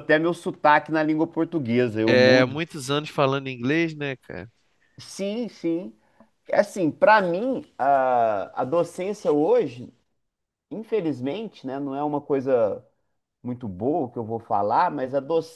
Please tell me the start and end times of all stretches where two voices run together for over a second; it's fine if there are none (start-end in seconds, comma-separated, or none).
none